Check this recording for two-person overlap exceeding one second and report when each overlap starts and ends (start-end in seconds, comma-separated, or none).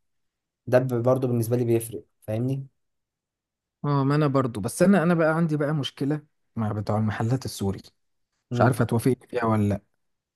none